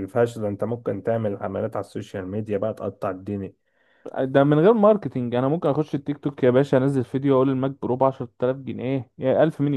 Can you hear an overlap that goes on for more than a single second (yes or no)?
no